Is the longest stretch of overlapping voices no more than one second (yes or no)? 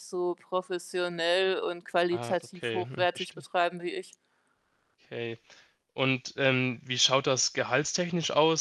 no